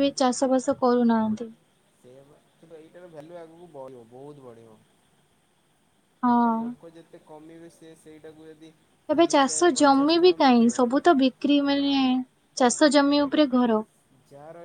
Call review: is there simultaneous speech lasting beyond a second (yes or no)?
yes